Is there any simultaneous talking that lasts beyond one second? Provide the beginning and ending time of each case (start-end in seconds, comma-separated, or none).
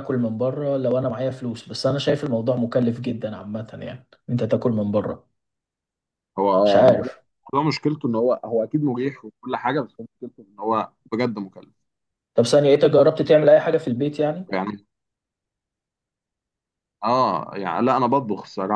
none